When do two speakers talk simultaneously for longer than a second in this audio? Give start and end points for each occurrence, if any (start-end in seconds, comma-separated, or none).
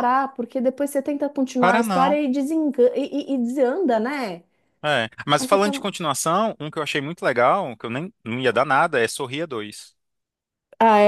none